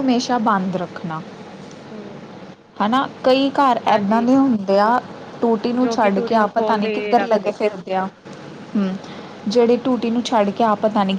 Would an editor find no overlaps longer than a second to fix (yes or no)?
no